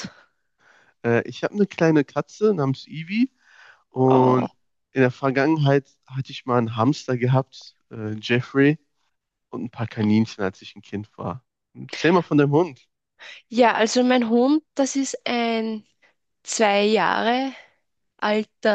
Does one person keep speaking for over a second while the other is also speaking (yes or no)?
no